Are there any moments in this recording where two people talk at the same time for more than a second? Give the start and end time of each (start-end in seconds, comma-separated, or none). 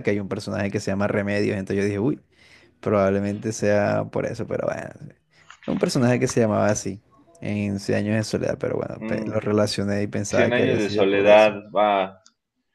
10.3-11.5